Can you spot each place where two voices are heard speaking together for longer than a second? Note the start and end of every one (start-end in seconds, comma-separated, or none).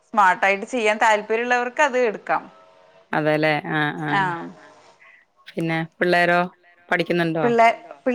none